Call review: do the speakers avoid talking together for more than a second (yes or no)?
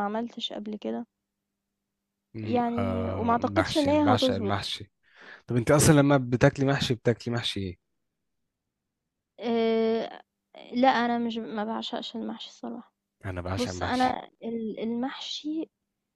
no